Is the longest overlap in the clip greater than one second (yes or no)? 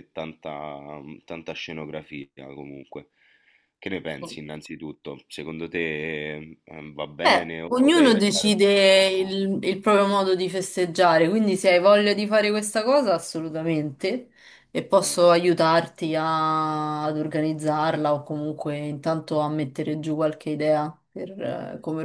yes